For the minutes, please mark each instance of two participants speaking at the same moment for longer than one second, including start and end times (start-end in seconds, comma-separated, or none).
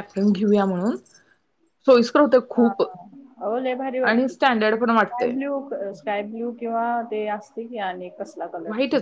4.0-5.4